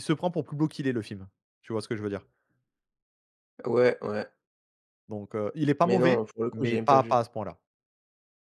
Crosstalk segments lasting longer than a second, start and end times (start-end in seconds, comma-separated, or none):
5.8-7.2